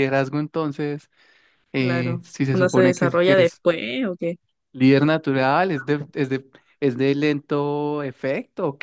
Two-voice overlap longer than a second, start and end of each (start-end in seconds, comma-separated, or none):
1.8-3.6